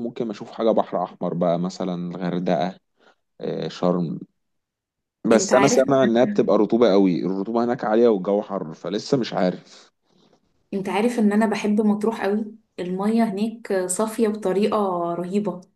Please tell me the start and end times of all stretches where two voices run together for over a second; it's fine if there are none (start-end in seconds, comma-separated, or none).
none